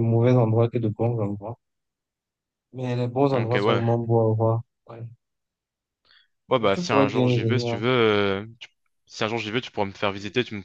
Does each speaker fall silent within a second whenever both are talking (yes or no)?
no